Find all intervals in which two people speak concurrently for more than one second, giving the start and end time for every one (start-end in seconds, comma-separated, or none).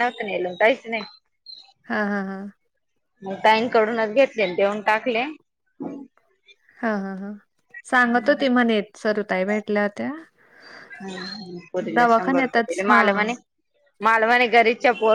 12.0-13.3